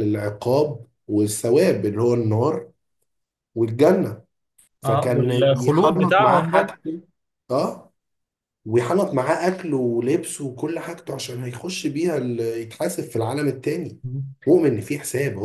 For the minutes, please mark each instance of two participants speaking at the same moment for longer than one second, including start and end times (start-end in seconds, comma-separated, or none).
4.8-6.7